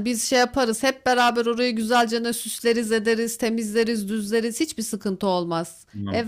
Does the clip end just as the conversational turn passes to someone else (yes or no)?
no